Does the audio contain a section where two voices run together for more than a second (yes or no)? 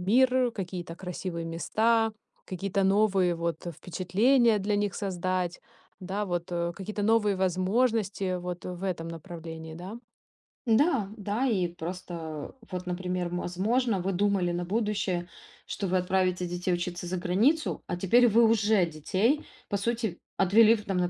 no